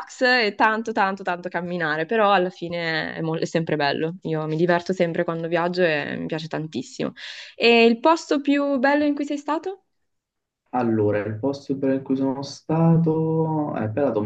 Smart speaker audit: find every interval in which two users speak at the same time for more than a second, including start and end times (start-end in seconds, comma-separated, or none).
none